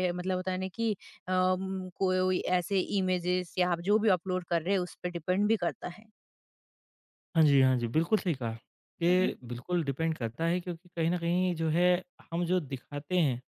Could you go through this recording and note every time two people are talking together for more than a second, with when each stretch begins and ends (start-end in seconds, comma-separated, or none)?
none